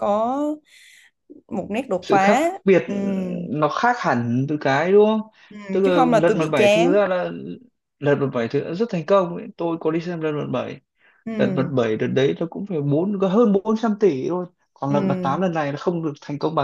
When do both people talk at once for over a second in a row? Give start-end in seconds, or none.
5.7-7.0